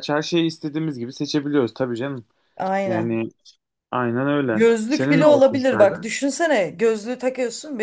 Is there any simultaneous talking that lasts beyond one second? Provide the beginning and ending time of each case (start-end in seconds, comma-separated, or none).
4.5-6.1